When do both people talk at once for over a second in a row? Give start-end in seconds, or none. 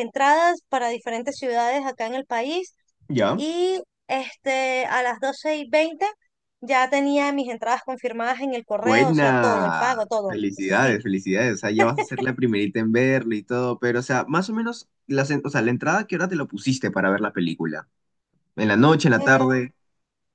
8.8-11.0